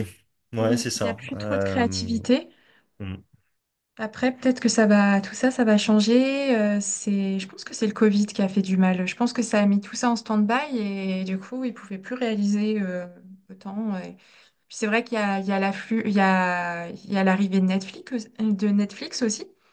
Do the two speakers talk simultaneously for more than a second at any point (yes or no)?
yes